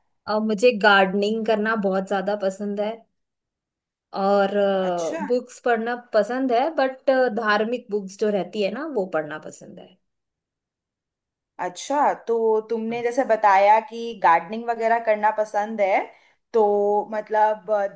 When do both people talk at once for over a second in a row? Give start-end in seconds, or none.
none